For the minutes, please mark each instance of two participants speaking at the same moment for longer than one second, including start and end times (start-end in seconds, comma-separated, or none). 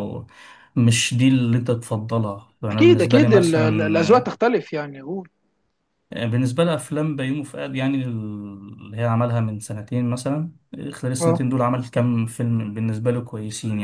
2.7-4.3